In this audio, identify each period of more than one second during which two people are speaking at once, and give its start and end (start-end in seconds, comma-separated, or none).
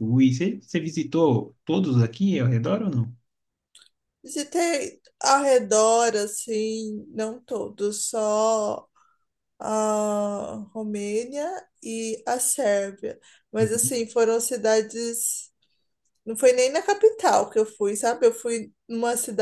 none